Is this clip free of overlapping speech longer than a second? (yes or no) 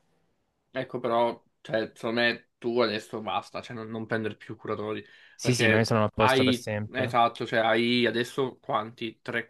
no